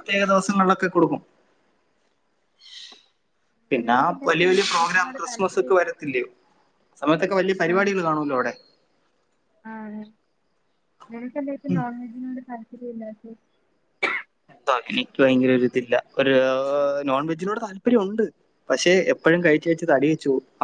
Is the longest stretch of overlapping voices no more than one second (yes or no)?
no